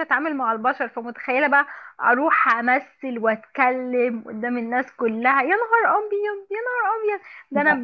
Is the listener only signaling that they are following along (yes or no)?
yes